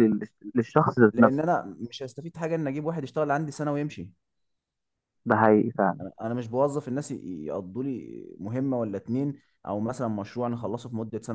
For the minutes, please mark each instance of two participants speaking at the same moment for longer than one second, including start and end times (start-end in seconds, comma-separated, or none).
none